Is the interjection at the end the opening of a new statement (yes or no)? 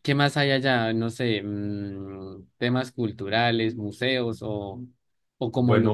no